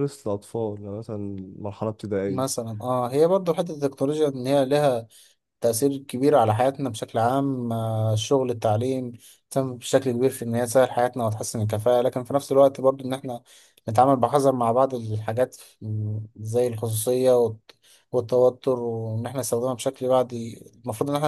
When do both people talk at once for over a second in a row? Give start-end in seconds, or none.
none